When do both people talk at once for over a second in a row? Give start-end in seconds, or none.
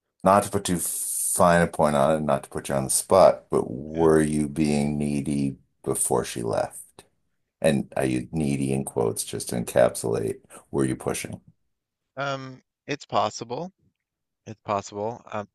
none